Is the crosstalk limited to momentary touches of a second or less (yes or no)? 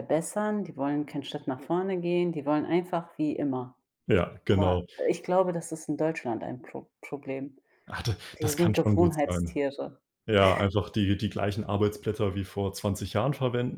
no